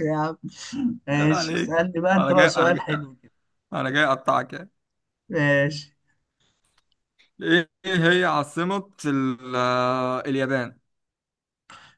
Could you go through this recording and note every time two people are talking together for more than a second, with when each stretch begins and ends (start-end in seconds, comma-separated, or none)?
1.1-2.9